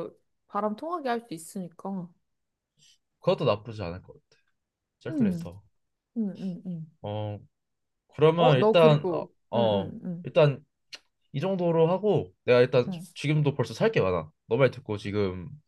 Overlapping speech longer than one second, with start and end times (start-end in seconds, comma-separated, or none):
8.4-10.2